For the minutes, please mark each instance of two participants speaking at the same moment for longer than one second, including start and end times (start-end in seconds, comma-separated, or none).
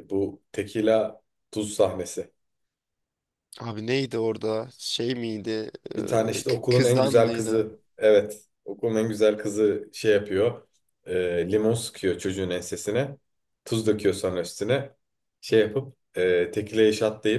6.0-7.7